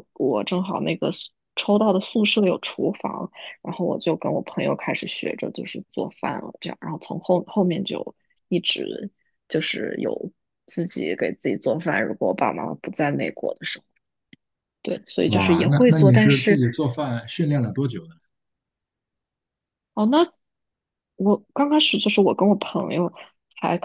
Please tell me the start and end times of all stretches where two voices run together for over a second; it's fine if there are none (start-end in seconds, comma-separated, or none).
15.2-16.6